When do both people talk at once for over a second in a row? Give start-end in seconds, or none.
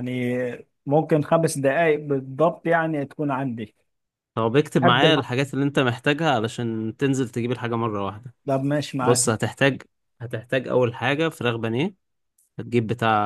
none